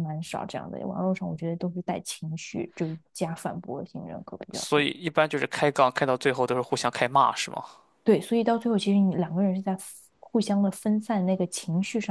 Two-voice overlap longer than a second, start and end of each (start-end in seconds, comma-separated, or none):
none